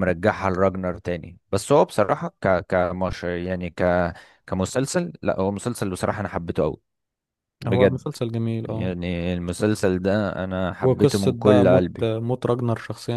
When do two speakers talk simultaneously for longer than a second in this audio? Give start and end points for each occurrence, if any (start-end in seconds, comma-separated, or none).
10.8-12.1